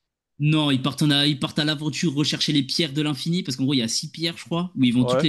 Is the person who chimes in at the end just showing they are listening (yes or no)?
yes